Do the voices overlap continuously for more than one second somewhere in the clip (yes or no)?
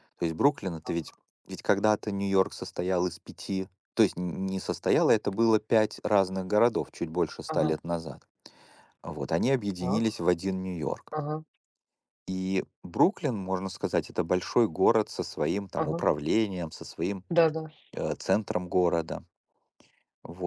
no